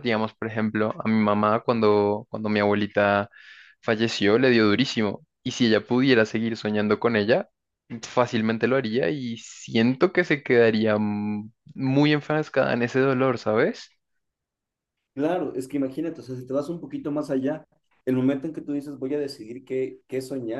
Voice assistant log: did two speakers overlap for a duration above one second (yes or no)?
no